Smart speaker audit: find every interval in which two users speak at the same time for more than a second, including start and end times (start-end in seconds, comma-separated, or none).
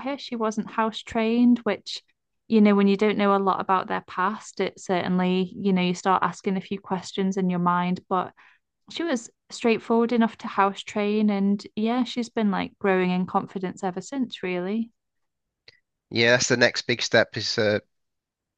none